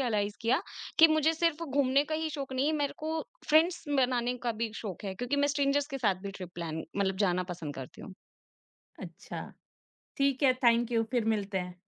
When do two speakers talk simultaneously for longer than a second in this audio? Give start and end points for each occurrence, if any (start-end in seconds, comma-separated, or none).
none